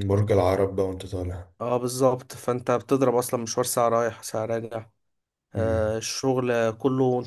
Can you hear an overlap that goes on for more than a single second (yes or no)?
no